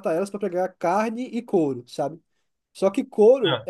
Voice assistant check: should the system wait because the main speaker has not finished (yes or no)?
yes